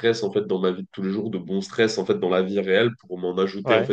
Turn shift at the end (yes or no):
no